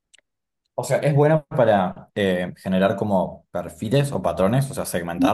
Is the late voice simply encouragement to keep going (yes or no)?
no